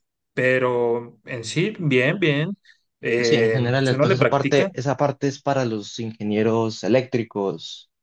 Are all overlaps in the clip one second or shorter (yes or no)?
no